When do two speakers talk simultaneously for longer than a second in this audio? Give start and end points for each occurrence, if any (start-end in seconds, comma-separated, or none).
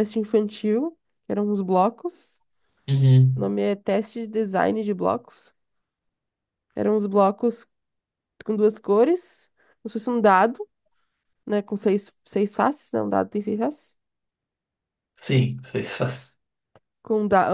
none